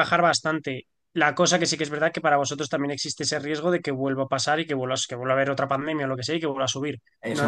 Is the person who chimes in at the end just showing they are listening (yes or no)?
no